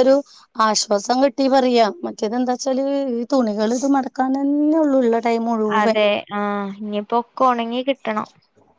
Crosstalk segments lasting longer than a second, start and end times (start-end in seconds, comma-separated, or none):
none